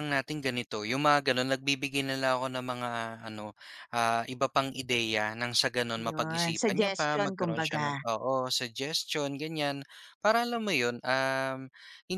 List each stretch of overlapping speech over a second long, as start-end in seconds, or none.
6.0-8.0